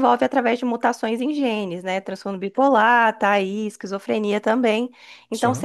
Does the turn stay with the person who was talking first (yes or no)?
yes